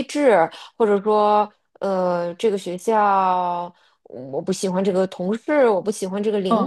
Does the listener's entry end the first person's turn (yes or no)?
yes